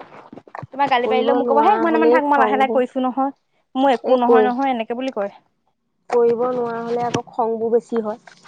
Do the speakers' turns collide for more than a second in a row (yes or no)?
yes